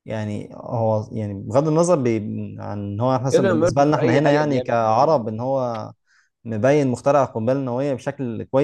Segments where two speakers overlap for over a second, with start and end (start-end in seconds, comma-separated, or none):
3.3-5.3